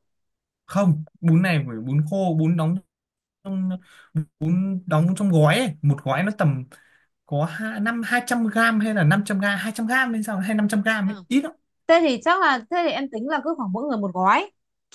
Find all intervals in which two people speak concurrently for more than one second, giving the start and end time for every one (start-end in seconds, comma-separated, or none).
none